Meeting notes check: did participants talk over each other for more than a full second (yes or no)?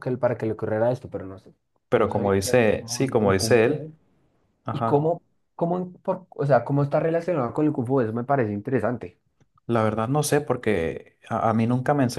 yes